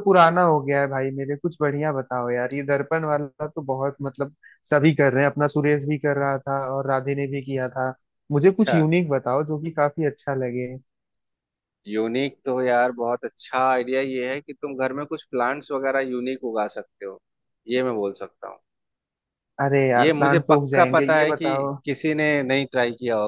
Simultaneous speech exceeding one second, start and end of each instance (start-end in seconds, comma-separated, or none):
20.0-21.8